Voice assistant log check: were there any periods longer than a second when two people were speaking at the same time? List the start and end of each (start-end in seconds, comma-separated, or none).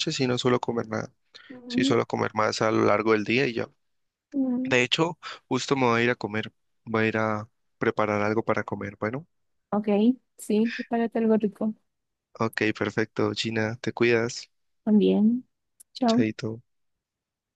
none